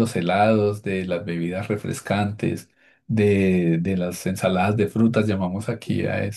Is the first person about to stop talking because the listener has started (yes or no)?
no